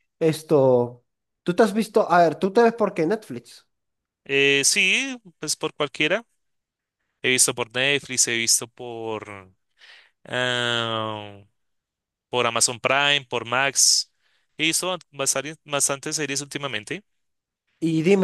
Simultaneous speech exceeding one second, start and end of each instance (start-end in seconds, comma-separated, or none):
none